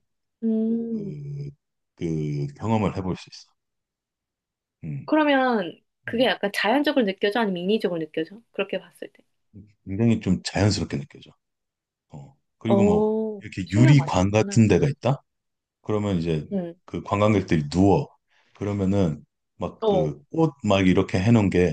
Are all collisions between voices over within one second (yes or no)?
no